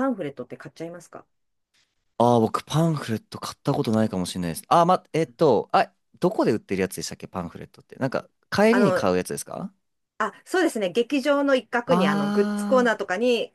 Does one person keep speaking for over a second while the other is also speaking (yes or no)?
no